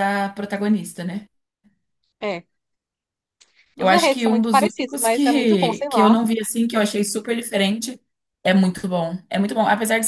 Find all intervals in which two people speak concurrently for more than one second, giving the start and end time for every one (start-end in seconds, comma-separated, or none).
3.8-6.2